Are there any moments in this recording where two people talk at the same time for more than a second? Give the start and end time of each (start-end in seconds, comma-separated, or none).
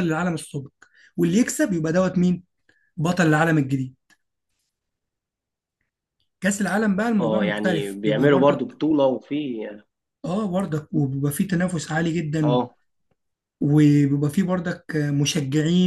7.2-8.7